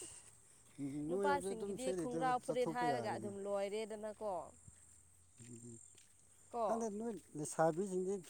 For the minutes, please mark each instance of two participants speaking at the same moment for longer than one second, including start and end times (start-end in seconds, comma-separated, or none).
1.1-3.3